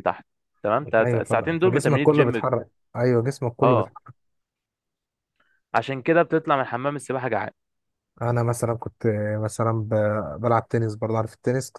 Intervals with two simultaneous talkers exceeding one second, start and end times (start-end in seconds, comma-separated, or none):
1.0-2.4